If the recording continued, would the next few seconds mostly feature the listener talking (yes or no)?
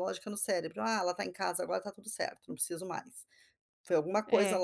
no